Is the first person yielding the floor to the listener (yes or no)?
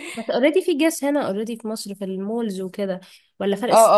yes